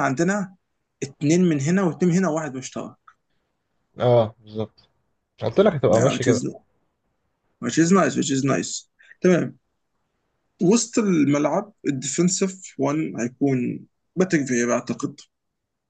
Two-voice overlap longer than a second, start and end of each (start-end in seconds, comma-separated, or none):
none